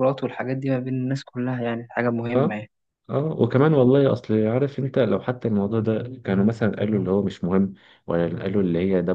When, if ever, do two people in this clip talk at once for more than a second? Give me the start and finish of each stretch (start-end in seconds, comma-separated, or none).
none